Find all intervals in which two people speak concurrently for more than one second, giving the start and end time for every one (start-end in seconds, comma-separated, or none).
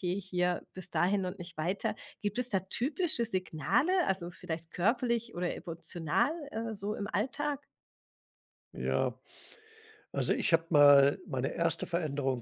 none